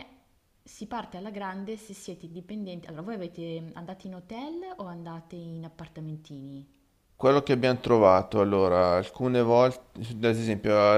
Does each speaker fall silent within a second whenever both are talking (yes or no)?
yes